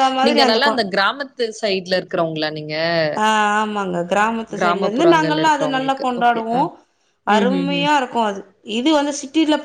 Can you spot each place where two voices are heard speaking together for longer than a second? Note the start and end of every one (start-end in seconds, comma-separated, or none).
4.6-6.6